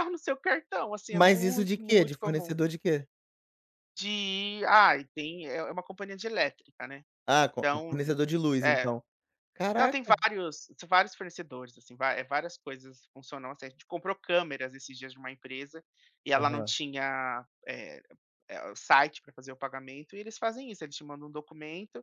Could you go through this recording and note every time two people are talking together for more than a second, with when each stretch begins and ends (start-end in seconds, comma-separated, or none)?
1.1-2.6